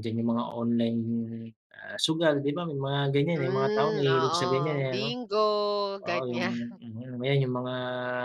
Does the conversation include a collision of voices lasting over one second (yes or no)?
yes